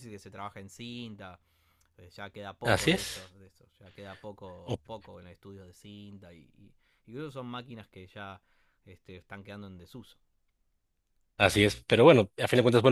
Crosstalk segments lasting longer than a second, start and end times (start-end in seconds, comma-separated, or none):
none